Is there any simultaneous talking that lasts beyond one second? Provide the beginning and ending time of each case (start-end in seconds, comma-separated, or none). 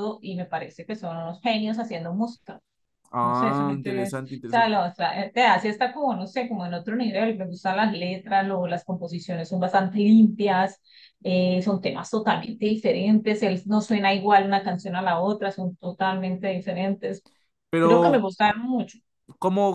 3.2-4.8